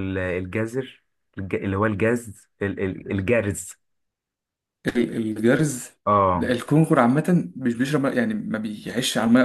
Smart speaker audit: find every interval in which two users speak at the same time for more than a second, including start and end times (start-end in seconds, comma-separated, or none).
none